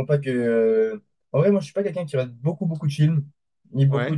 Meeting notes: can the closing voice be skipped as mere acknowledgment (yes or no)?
yes